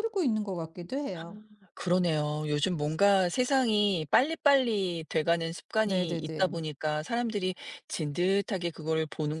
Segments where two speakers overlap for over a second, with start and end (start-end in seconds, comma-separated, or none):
none